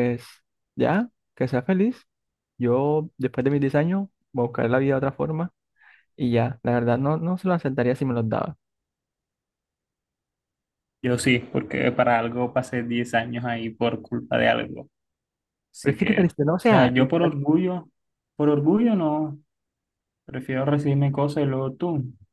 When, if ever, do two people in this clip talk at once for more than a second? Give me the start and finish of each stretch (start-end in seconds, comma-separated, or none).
15.8-17.3